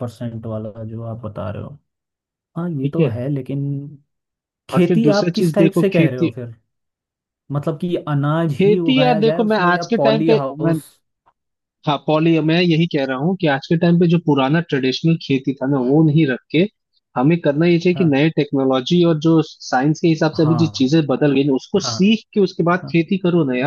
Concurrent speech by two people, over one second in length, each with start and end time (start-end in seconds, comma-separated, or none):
4.7-6.3, 8.6-10.4